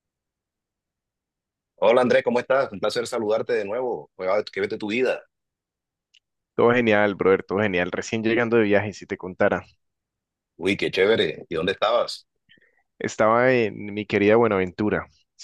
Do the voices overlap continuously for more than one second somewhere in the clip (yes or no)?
no